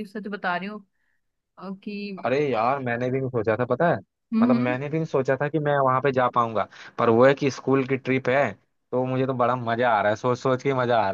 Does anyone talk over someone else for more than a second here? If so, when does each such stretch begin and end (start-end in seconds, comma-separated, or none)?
none